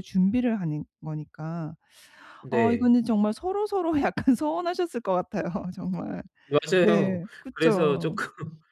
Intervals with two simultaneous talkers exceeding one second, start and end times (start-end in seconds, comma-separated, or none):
6.8-8.2